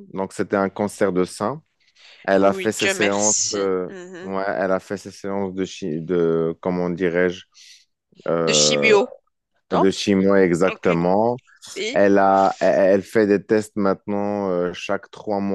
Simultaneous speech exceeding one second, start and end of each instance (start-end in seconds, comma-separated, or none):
2.4-4.4